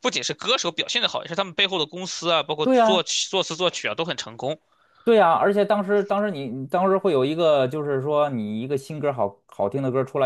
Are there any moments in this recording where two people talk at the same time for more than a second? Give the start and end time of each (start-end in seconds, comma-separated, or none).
none